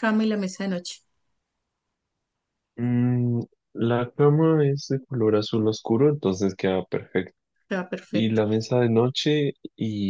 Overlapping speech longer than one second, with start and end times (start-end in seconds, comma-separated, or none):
none